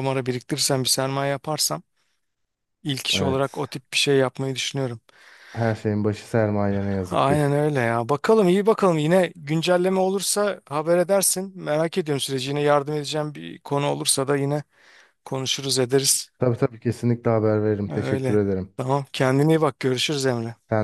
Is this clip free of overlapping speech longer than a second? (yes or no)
yes